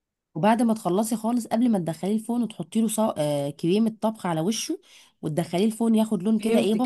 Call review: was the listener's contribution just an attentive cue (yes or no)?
no